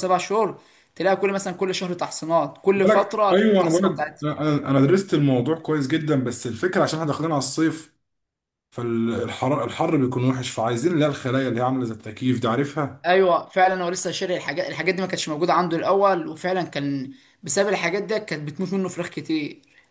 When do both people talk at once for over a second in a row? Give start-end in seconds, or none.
2.8-4.3